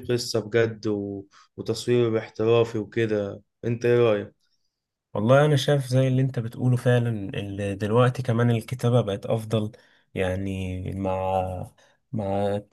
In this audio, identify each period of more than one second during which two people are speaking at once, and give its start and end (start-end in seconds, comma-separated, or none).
none